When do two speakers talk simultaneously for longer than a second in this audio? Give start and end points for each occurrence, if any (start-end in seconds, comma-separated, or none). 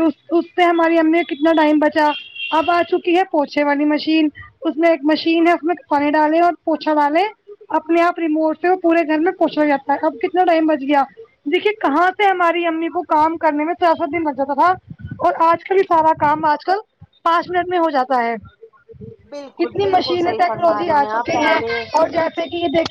19.6-21.6